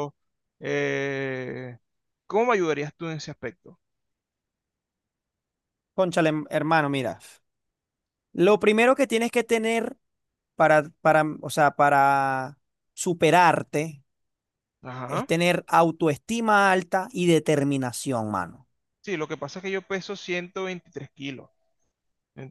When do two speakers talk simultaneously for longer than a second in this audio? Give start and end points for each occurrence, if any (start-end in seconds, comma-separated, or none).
none